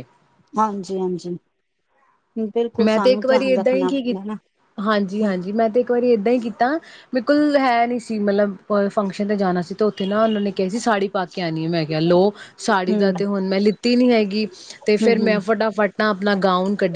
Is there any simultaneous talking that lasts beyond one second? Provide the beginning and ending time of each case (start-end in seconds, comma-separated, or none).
2.8-4.3